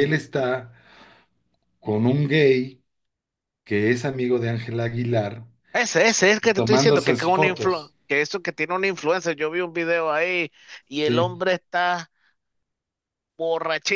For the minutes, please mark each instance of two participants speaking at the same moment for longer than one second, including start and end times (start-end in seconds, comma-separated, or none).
6.5-7.9